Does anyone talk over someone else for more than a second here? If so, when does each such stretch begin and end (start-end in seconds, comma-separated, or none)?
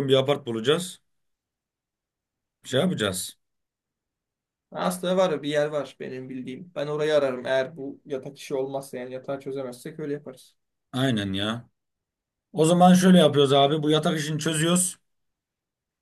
none